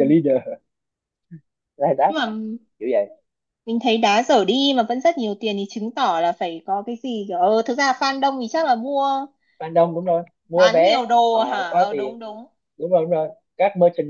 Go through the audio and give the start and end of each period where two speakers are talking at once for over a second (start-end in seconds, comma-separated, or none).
10.5-12.2